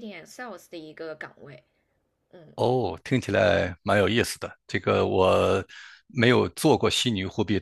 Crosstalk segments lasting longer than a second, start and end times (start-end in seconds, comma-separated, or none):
none